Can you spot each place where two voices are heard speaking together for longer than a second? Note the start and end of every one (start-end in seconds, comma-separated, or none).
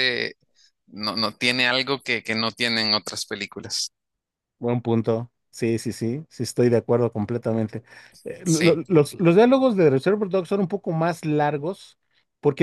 none